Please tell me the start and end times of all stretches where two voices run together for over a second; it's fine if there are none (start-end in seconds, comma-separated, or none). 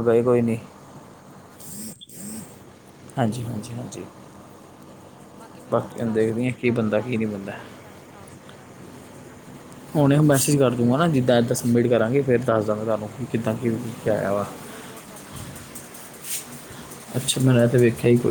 6.0-7.6